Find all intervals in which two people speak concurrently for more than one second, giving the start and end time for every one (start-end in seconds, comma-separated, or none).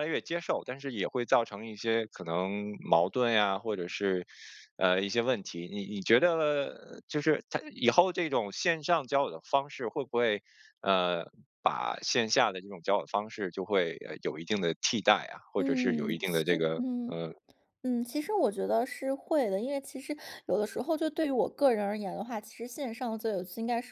15.6-17.2